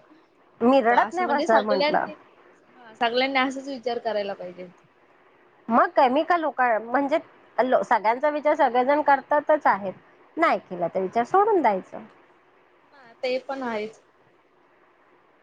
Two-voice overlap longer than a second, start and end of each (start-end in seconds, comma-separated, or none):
0.6-2.1